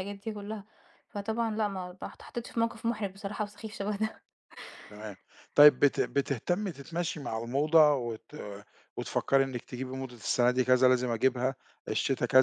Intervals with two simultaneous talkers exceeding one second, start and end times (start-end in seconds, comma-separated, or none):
none